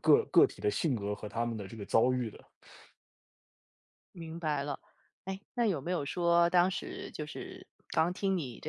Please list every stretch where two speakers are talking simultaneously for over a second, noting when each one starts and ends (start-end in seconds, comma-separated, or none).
none